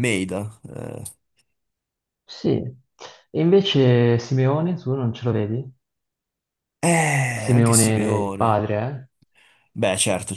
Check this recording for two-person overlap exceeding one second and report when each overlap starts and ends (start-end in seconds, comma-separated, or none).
7.3-8.7